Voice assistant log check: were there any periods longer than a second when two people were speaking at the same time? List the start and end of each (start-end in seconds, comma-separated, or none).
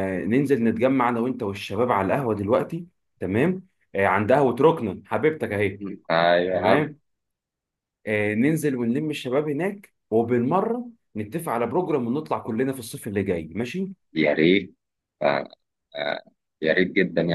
none